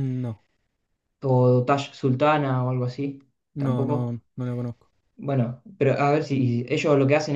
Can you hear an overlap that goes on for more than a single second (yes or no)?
no